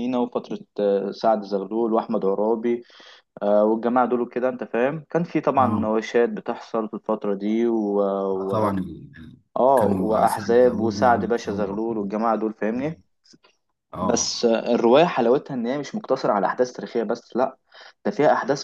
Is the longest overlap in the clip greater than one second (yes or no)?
yes